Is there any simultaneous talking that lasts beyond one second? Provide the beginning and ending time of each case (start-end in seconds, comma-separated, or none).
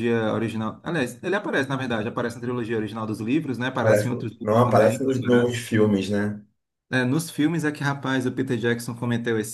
3.7-5.6